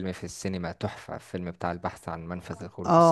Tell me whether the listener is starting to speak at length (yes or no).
yes